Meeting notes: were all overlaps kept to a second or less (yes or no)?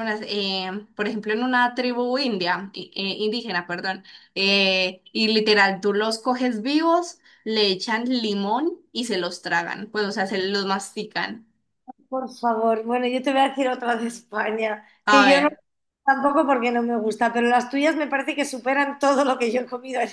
yes